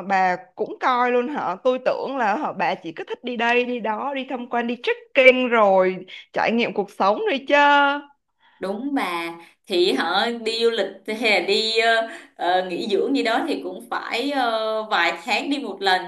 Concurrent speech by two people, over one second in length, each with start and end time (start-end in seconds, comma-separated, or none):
none